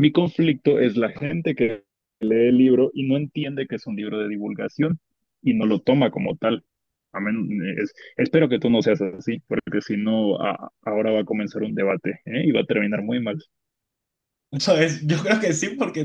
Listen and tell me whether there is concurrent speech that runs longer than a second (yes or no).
no